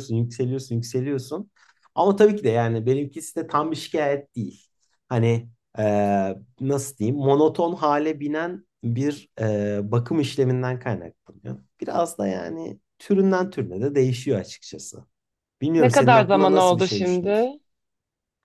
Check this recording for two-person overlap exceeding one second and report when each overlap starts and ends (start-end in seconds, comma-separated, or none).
15.8-17.5